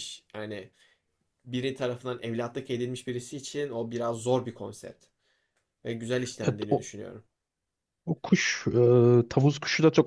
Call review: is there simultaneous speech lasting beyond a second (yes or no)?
no